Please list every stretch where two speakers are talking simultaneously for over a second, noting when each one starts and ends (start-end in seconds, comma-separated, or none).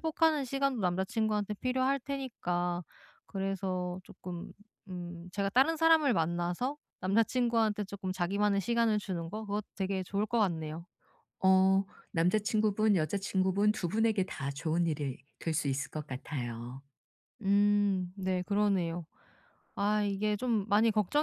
none